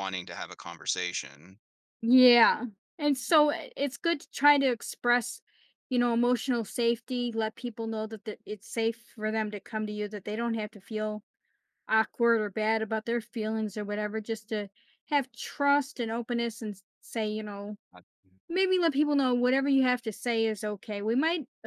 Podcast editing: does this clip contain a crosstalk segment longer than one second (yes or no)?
no